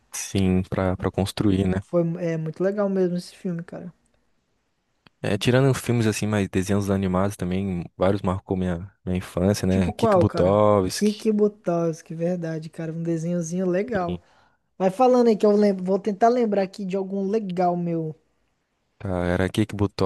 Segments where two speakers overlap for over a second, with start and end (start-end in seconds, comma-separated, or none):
9.7-11.3